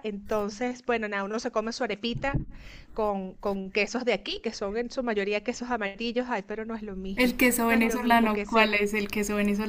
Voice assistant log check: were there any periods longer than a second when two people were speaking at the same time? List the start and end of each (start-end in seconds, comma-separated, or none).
7.2-8.8